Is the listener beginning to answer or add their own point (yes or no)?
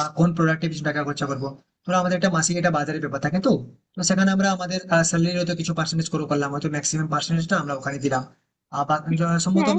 no